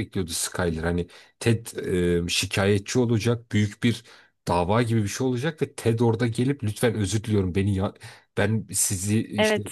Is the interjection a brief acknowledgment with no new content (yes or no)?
yes